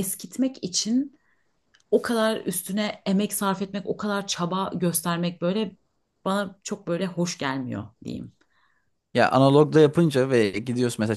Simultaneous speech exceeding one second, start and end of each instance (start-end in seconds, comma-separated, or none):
none